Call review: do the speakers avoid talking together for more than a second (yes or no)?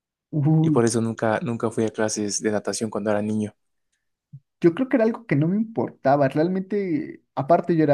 yes